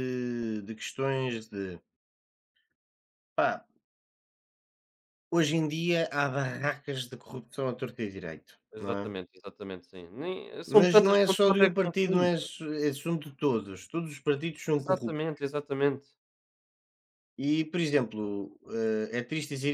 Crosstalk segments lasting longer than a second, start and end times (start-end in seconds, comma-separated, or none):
10.7-12.3